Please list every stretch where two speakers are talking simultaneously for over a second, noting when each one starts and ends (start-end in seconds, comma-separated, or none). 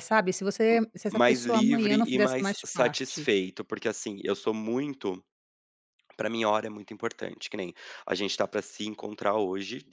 1.1-3.3